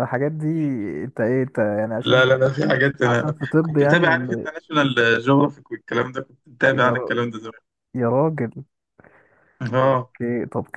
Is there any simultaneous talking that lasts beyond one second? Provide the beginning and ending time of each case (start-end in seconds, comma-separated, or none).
3.0-4.5